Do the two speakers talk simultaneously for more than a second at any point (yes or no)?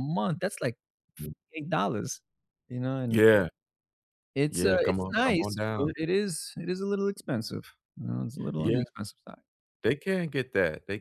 yes